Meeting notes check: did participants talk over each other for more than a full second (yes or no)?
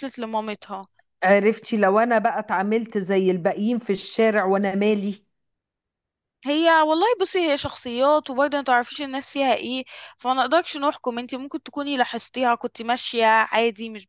no